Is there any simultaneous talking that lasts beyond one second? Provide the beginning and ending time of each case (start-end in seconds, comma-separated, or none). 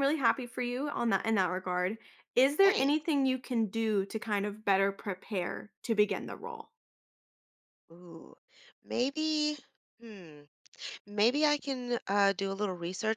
none